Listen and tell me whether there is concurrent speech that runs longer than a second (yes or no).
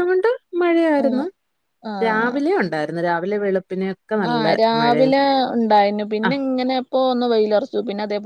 no